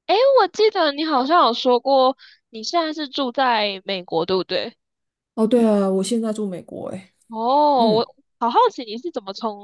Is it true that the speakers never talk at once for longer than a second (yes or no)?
yes